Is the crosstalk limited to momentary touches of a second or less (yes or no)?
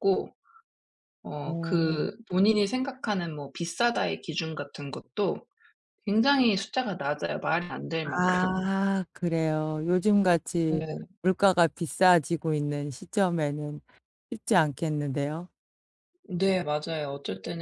yes